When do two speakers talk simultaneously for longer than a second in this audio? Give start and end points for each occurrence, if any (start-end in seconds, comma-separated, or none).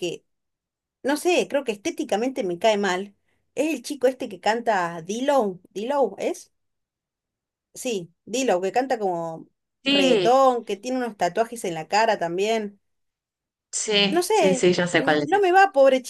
14.1-15.5